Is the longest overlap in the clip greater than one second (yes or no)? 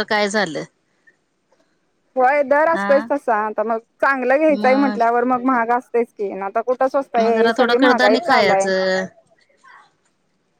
no